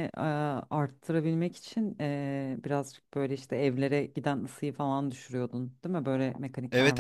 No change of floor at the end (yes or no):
no